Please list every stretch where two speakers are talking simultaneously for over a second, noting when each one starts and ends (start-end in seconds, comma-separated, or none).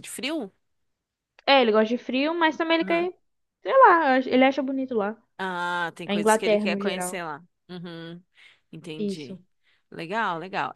6.0-7.2